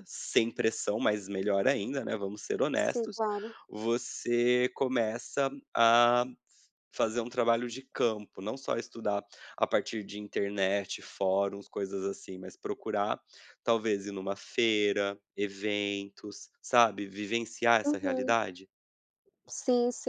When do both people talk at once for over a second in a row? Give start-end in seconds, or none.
none